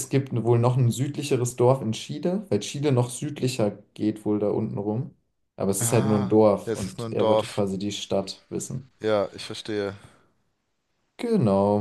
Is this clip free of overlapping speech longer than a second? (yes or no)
no